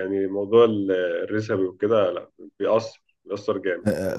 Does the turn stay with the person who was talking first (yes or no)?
no